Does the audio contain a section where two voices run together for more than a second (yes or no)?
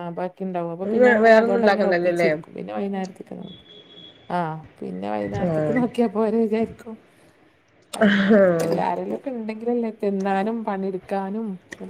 yes